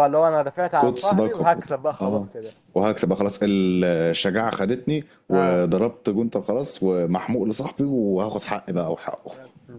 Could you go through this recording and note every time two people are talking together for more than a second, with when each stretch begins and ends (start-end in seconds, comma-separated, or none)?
0.8-2.3